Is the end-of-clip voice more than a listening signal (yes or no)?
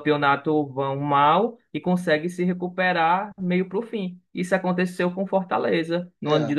no